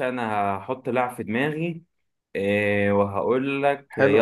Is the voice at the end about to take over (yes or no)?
yes